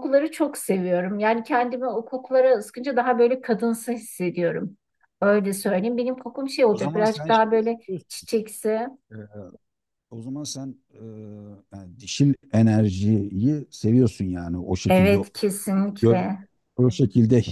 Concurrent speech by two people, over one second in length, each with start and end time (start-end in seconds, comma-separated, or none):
6.7-8.3